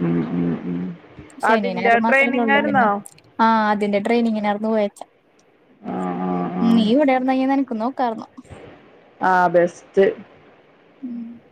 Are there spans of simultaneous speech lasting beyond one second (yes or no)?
yes